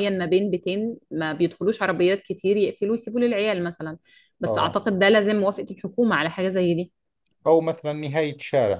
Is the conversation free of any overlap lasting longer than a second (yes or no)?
yes